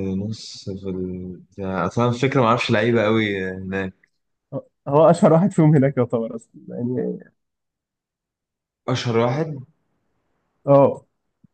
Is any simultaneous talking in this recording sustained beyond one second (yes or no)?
no